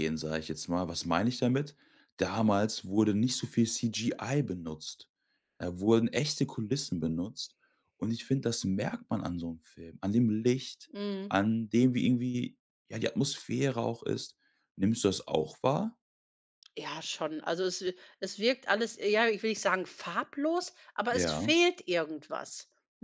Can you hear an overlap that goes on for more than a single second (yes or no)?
no